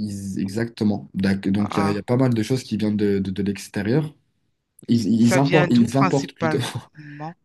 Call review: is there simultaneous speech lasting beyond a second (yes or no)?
yes